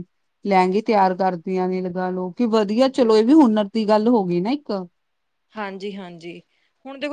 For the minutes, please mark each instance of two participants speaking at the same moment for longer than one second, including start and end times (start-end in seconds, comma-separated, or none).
none